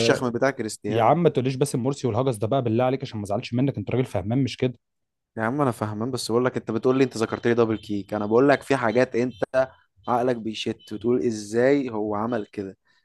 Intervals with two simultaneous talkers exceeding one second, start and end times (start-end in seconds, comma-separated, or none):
none